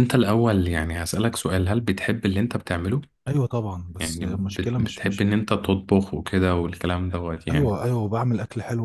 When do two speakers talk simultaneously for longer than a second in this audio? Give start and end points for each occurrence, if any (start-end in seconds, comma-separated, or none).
4.0-5.2